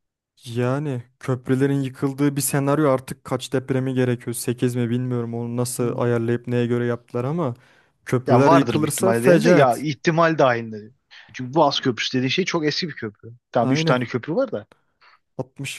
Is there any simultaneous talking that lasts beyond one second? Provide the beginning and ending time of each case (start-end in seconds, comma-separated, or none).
8.3-9.8